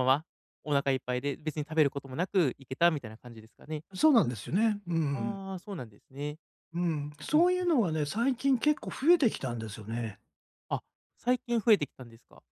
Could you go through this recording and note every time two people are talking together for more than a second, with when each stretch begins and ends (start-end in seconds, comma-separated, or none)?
none